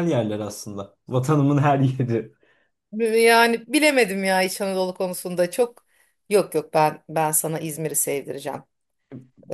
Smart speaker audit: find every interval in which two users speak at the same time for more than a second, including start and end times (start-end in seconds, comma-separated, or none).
none